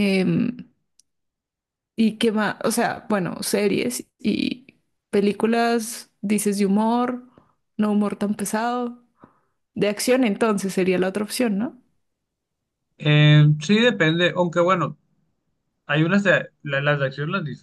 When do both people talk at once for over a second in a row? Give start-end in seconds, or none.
none